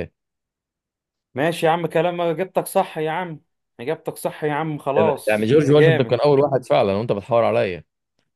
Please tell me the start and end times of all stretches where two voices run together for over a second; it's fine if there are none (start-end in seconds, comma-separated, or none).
5.0-6.2